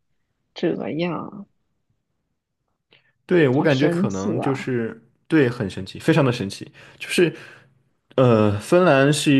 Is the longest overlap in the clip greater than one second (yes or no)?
yes